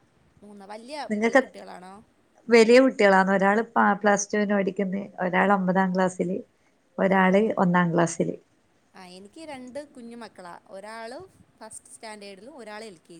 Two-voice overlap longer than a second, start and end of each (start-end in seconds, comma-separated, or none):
none